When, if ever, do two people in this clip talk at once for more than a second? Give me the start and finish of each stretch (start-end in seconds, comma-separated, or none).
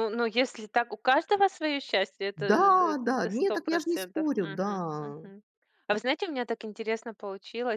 2.5-4.7